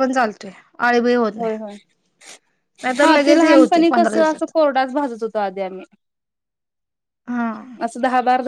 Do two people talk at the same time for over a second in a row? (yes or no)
yes